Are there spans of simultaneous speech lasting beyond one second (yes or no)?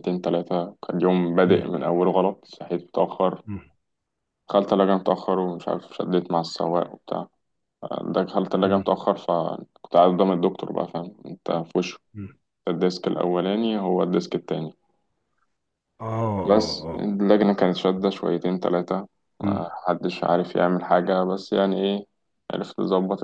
no